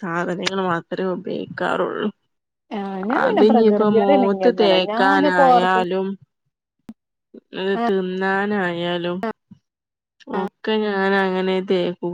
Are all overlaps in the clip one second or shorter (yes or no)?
no